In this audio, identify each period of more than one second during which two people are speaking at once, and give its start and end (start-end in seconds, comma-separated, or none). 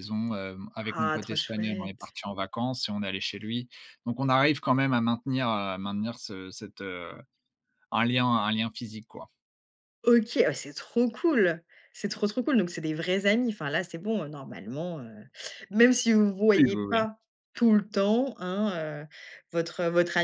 0.8-2.1